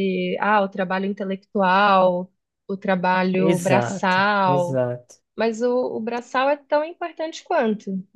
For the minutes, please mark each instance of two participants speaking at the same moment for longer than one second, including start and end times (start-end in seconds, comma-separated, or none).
3.4-4.8